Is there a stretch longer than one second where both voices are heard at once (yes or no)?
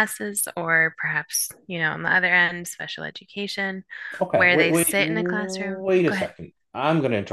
yes